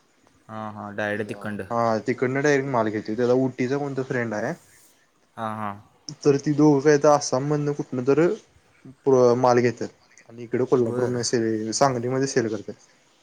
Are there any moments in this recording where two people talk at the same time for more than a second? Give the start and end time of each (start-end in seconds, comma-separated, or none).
none